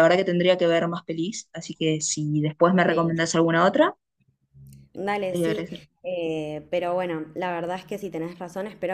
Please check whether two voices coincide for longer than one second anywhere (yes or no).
no